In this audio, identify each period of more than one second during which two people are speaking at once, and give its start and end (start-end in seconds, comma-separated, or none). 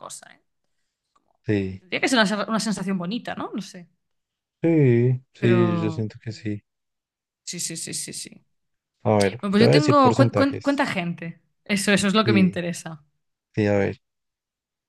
9.4-10.9